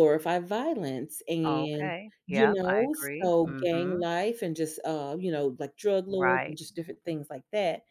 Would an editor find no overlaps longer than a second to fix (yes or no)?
no